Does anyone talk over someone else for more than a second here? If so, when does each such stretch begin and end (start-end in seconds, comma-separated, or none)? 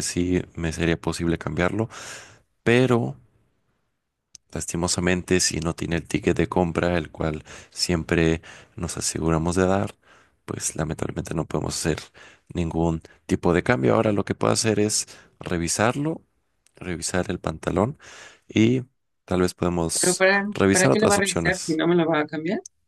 19.9-21.8